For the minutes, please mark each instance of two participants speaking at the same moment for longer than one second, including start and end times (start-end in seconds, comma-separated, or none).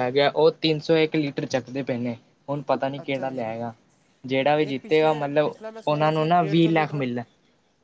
4.7-7.0